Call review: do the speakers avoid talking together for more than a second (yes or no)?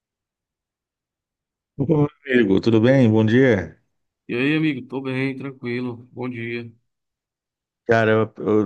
yes